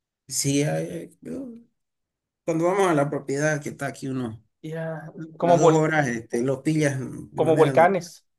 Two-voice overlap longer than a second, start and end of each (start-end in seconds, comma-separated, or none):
none